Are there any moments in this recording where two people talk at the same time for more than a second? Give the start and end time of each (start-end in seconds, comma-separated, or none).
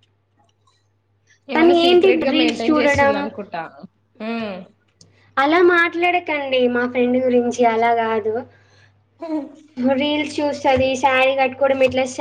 1.5-3.2